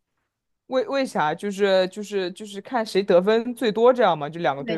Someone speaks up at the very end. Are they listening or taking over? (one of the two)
taking over